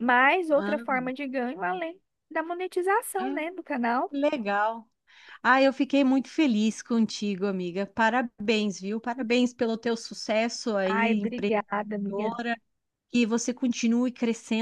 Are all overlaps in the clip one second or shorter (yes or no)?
no